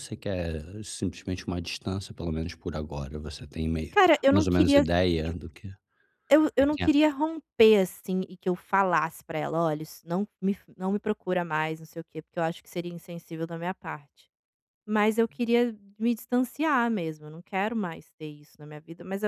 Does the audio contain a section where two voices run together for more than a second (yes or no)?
yes